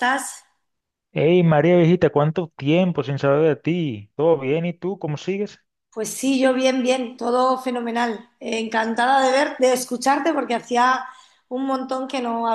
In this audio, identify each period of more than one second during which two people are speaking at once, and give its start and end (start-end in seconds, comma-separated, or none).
none